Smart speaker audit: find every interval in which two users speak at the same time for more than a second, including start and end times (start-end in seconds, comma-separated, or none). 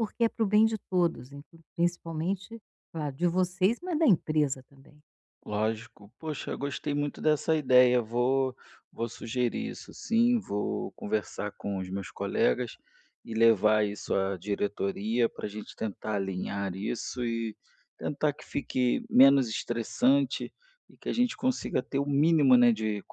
none